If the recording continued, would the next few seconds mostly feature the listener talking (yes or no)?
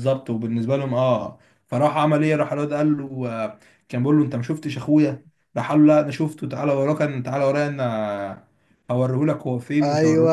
yes